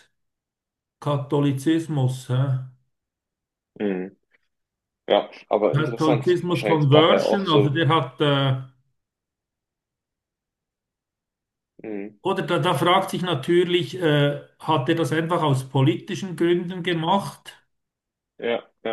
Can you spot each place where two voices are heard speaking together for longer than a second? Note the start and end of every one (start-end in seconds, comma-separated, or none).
5.7-7.7